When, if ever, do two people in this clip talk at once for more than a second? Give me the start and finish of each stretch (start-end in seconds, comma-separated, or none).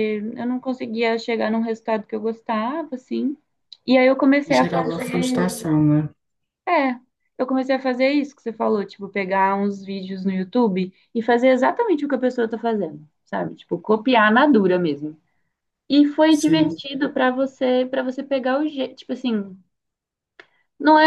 4.5-5.7